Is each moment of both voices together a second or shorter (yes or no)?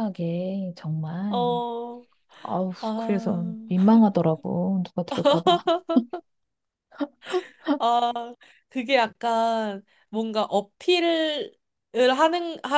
yes